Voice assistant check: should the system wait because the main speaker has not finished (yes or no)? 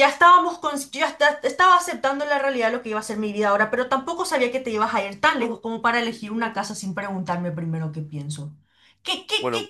no